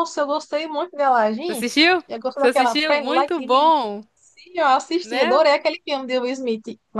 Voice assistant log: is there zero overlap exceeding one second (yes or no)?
no